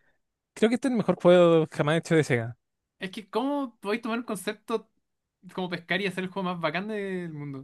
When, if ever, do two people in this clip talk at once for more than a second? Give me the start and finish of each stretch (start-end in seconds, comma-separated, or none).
none